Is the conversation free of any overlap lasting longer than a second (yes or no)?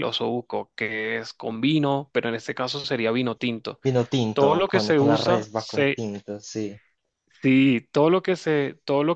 no